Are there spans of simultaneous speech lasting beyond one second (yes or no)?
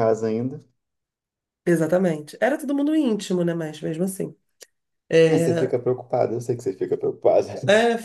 no